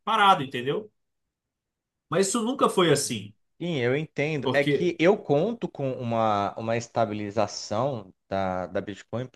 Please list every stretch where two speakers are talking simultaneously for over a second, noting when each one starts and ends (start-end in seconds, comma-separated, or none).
none